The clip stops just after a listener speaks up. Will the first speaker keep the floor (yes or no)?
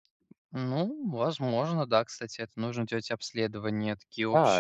no